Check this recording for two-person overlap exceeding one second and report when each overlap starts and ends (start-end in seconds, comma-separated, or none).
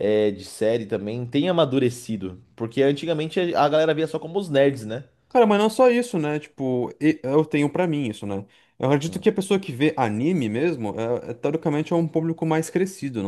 none